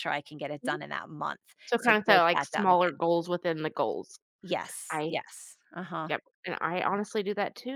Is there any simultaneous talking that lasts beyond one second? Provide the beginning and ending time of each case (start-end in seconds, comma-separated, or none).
1.8-3.0